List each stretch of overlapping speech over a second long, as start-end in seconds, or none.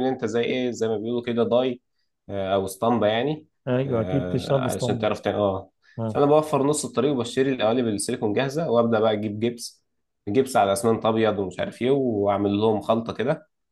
3.9-5.1